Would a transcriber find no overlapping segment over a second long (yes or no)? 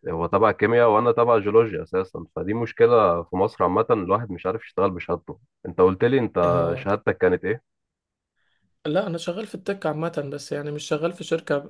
yes